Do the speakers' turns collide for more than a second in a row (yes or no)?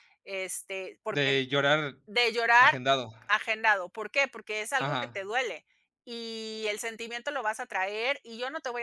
no